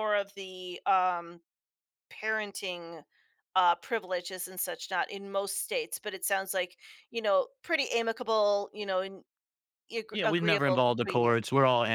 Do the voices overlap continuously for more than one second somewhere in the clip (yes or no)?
yes